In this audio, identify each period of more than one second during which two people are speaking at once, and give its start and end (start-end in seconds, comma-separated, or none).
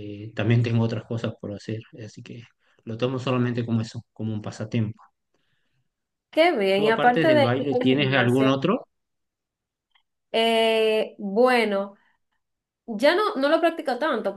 6.7-8.6